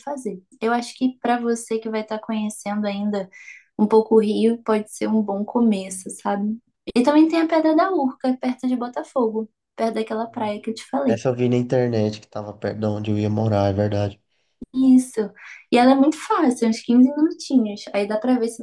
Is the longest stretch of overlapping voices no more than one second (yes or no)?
yes